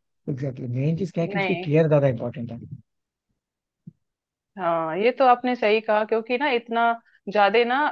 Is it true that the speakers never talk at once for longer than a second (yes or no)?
yes